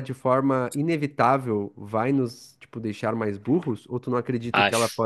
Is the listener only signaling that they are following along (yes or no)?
yes